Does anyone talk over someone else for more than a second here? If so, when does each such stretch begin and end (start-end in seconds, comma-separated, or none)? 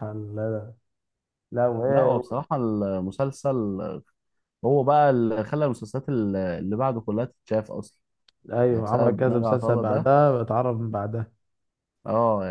8.7-10.1